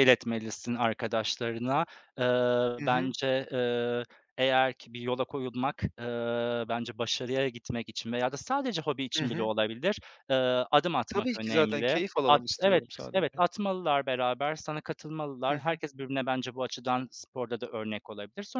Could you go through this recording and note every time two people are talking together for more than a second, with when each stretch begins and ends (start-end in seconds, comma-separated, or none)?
11.1-13.4